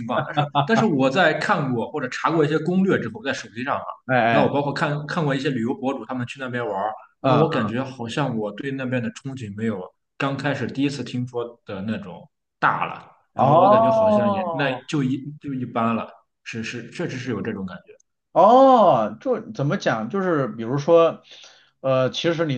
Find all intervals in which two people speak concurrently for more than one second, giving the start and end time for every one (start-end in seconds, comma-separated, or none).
13.3-14.8